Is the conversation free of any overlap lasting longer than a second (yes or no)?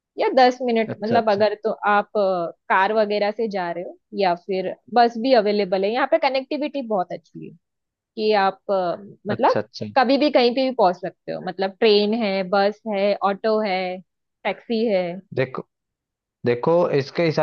yes